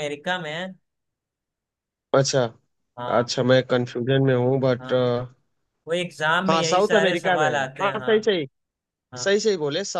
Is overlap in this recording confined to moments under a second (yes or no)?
no